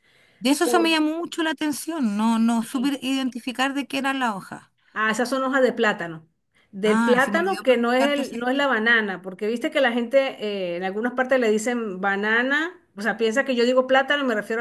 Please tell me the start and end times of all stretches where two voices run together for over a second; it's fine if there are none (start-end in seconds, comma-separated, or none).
6.8-8.7